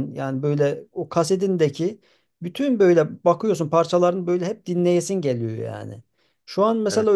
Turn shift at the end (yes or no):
no